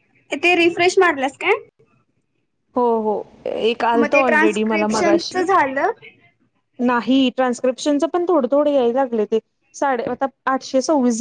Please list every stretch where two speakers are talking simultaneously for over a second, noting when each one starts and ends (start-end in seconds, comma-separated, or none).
4.0-5.5